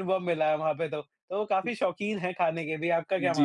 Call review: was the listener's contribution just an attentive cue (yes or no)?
no